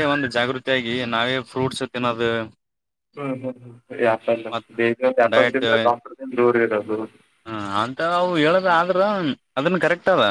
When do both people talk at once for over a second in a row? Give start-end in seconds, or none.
none